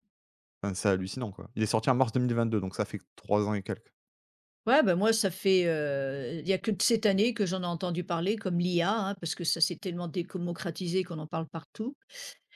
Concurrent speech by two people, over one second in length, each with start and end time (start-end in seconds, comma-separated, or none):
none